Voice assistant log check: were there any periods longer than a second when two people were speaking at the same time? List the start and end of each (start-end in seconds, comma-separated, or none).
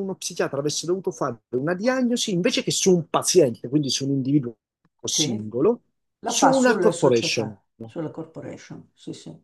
6.2-7.5